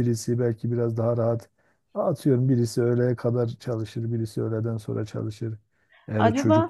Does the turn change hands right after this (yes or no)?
no